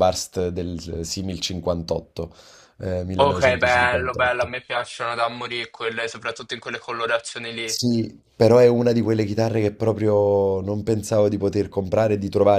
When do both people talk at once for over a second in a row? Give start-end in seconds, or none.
3.2-4.5